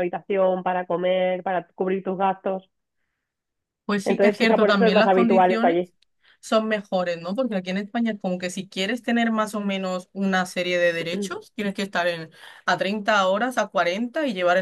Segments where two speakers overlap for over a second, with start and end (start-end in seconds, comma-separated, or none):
4.0-5.8